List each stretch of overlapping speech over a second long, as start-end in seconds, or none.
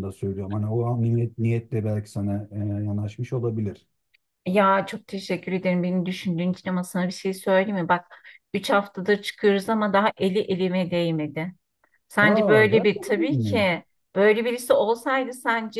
12.2-13.7